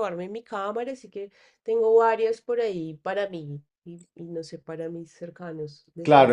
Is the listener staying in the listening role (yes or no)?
no